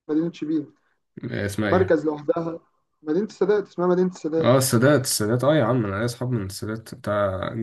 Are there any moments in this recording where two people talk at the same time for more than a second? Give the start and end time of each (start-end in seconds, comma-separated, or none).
none